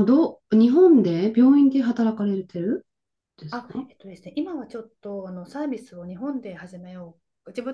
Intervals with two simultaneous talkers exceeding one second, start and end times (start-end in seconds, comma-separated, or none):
none